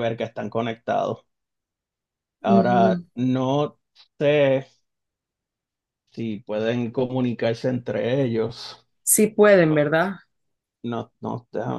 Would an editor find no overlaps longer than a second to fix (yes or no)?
yes